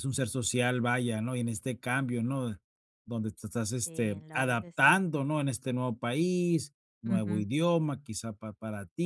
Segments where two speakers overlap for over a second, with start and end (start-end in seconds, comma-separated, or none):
3.7-5.0